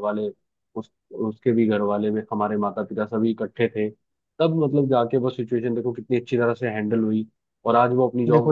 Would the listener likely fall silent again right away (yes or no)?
no